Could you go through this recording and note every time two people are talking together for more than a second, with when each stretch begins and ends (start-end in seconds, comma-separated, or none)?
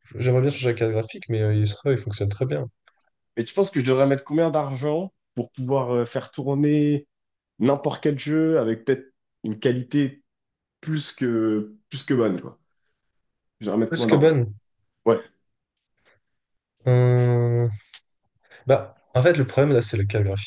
none